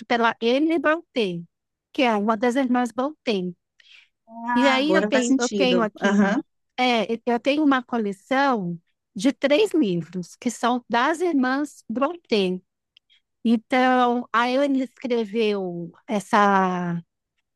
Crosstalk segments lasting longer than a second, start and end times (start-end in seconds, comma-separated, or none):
4.5-6.4